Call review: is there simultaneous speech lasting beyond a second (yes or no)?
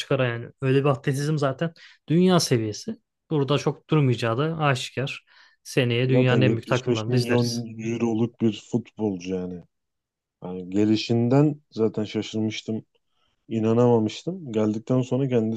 yes